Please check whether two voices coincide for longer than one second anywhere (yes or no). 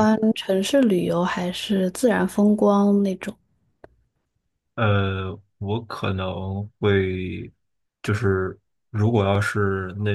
no